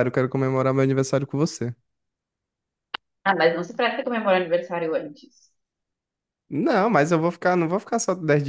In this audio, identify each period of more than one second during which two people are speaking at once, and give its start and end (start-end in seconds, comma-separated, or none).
none